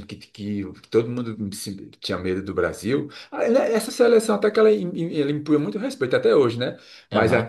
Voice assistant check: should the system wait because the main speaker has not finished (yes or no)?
yes